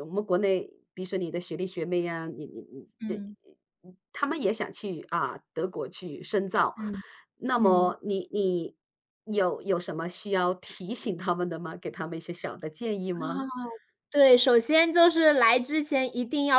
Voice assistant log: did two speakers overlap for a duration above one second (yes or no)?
no